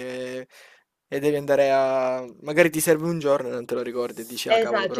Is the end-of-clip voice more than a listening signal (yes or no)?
yes